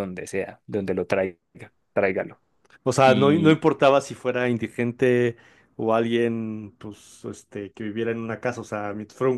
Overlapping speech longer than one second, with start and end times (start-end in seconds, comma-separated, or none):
none